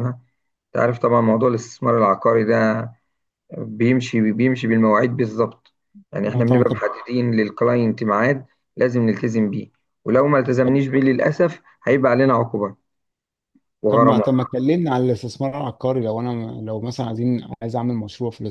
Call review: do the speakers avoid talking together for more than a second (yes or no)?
yes